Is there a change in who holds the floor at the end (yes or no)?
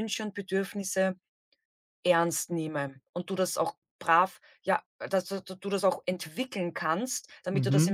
no